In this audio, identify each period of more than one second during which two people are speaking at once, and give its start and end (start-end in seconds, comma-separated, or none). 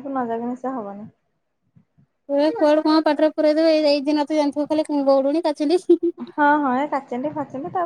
none